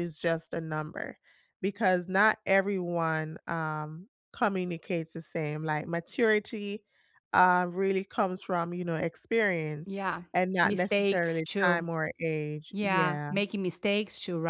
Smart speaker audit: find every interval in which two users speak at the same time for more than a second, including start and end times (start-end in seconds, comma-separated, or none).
10.6-11.9